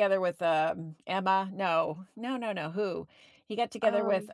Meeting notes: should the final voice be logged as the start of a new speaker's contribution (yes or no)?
no